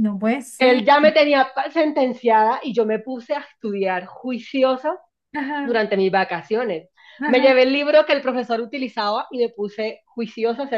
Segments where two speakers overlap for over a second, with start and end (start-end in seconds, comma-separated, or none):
none